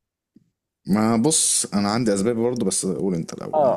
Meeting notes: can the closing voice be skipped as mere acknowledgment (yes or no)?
no